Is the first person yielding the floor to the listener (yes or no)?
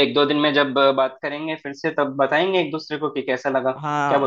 yes